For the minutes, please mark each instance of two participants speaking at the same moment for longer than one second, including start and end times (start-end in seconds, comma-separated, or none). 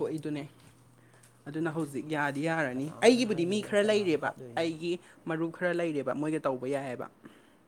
2.7-4.7